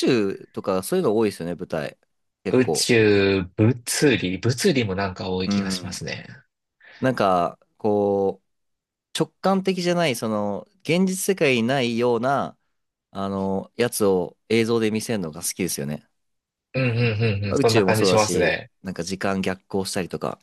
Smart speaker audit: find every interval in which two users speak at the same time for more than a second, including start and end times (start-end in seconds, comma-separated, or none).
17.5-18.7